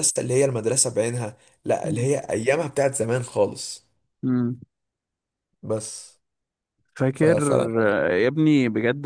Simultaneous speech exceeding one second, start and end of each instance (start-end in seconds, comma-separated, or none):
none